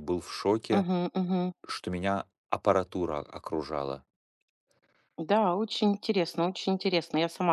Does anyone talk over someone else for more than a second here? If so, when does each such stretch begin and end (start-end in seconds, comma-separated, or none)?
none